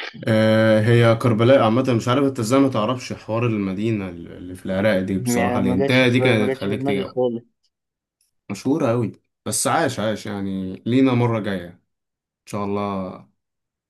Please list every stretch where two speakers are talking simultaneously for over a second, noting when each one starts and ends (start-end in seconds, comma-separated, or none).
5.2-7.2